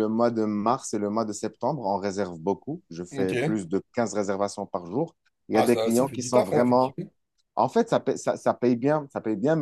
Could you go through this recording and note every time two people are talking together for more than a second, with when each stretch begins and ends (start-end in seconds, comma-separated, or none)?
5.5-7.0